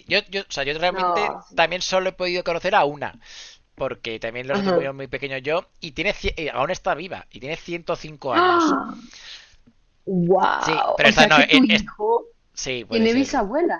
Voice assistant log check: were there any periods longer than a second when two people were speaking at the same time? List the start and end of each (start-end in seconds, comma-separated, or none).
10.6-11.8